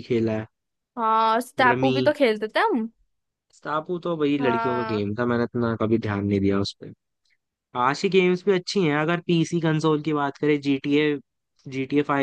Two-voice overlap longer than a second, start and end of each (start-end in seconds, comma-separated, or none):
none